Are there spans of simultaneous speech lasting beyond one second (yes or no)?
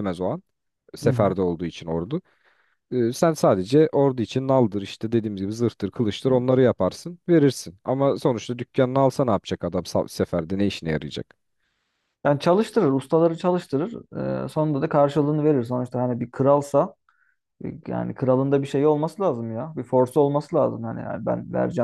no